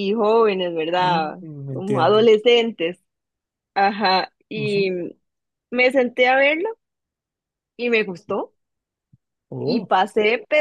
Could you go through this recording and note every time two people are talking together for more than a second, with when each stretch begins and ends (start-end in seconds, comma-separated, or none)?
1.0-2.3